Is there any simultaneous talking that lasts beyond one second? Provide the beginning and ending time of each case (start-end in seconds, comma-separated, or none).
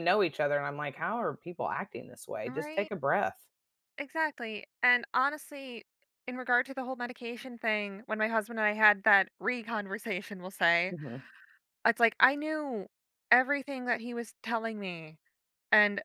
none